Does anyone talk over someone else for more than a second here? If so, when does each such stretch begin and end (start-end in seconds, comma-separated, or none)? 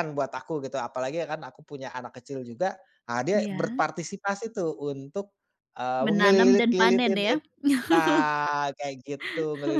6.0-7.3